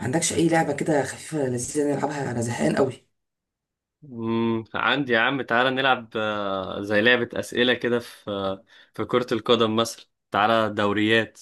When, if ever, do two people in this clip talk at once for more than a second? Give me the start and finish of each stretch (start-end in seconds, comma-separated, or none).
none